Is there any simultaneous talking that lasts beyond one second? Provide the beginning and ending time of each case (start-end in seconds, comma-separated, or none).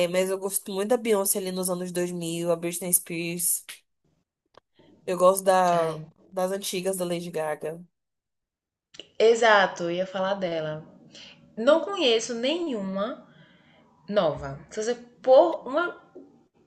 none